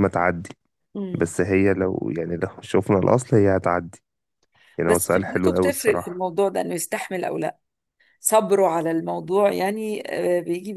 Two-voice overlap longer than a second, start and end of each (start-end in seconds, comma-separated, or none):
4.8-6.2